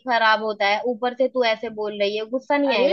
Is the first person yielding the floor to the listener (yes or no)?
yes